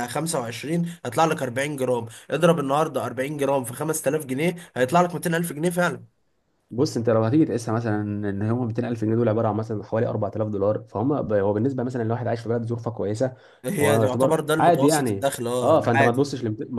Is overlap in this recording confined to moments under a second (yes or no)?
no